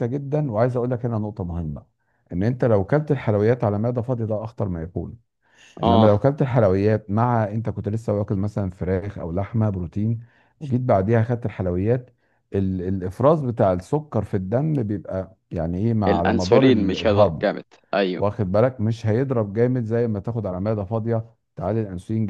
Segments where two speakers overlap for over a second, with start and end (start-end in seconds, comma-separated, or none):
16.1-17.5